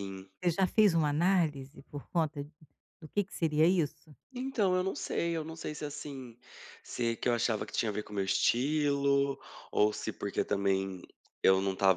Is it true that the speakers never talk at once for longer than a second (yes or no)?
yes